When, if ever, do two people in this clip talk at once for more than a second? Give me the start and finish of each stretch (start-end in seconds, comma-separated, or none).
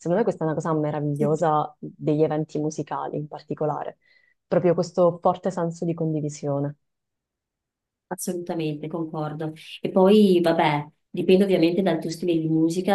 none